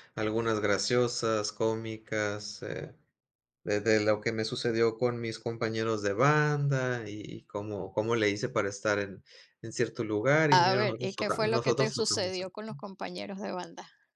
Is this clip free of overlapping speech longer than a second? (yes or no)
no